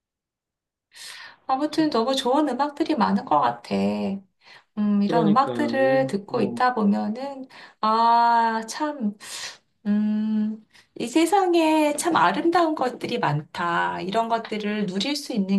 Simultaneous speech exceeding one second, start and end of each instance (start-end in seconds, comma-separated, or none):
5.0-6.6